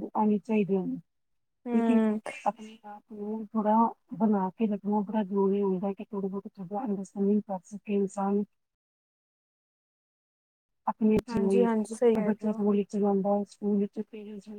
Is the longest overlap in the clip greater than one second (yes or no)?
yes